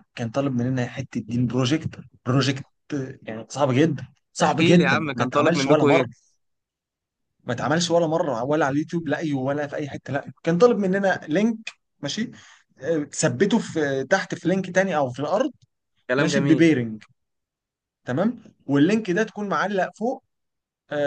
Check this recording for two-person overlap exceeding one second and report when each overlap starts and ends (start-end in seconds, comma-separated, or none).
4.4-6.1